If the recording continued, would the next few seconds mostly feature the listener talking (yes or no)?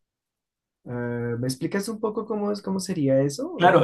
yes